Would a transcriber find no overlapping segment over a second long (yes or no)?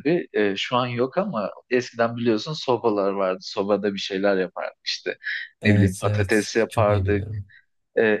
no